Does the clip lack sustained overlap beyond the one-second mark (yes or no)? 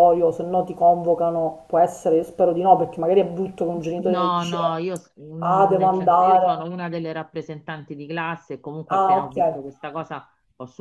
no